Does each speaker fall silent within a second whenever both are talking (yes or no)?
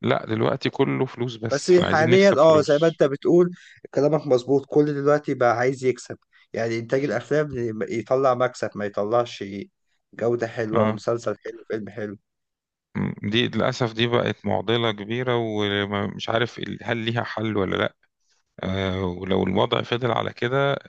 no